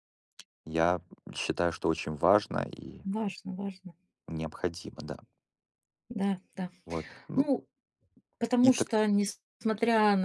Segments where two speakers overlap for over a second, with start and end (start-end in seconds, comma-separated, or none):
none